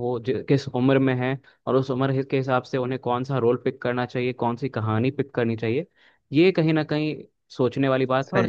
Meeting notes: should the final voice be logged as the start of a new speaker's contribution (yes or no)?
no